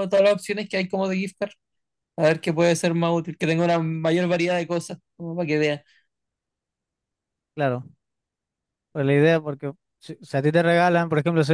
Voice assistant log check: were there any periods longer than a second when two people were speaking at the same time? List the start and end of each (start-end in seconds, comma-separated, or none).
none